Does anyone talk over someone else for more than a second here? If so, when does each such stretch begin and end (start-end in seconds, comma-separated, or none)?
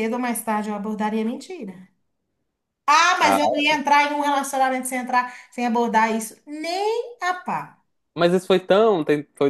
none